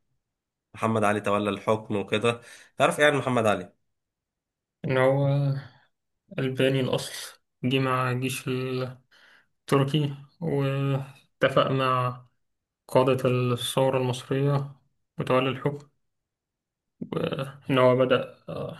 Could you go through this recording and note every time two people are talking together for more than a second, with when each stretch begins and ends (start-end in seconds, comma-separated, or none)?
none